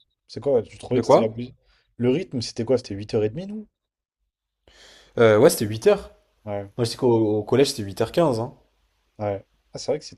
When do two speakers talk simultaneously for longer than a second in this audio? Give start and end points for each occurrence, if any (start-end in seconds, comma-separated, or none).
none